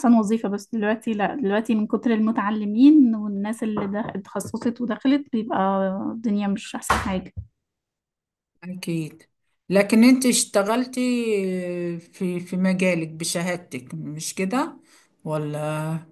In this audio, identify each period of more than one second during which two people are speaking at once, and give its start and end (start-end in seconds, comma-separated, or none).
none